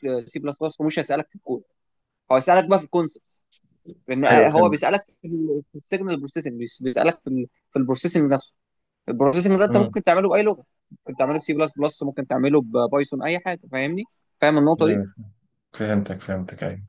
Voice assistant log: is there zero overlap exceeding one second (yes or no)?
yes